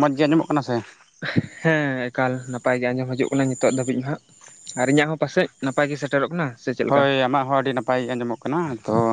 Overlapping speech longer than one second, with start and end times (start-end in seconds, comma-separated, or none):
none